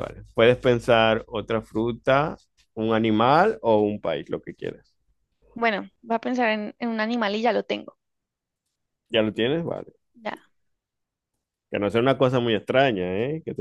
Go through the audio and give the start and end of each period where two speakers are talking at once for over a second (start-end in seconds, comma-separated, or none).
none